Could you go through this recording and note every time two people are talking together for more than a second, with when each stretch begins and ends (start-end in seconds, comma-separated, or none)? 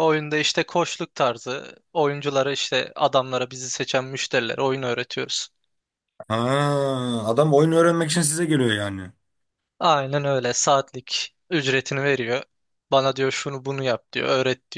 none